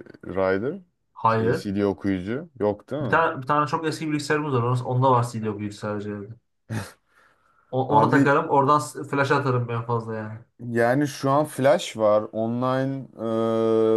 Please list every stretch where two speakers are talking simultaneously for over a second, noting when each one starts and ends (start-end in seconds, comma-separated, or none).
none